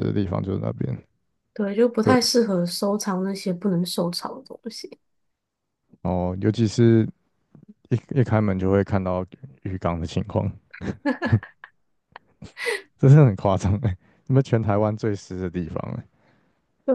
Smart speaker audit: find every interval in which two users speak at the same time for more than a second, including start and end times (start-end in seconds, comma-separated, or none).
none